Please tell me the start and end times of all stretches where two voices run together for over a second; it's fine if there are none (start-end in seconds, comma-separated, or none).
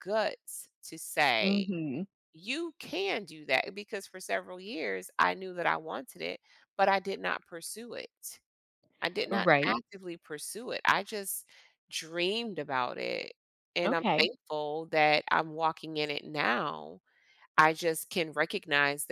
none